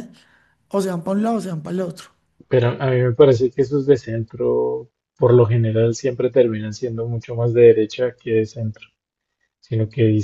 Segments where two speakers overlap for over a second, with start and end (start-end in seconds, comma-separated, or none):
none